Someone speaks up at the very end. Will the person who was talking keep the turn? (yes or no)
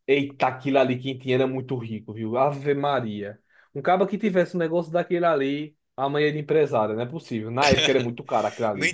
no